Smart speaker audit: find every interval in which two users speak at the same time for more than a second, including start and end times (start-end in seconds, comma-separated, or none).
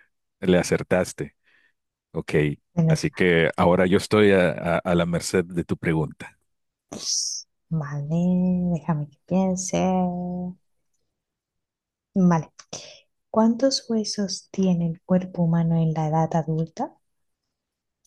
none